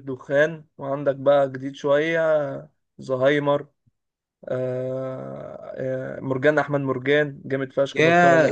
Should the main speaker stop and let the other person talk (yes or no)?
yes